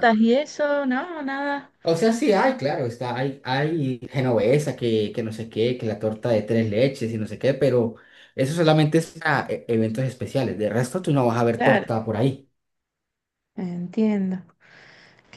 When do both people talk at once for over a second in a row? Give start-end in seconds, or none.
none